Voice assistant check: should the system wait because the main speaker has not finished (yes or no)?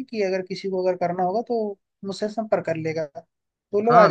no